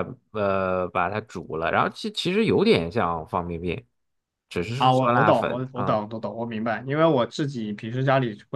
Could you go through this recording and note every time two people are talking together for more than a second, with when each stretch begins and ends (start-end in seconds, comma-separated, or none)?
4.8-6.0